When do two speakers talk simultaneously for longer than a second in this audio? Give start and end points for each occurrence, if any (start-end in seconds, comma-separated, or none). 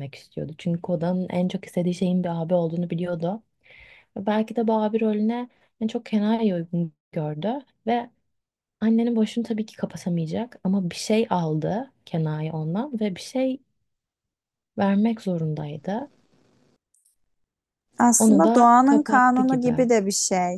18.2-19.9